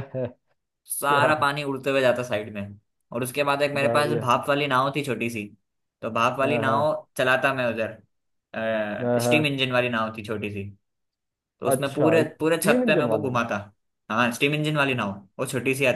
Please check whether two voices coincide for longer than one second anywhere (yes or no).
yes